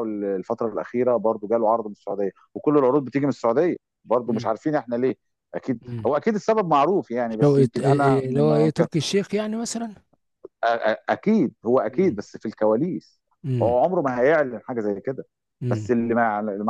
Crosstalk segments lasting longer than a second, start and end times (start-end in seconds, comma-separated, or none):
7.4-8.9